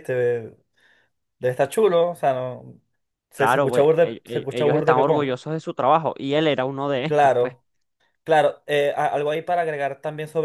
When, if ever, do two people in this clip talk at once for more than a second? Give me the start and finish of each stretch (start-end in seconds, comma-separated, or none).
3.4-5.3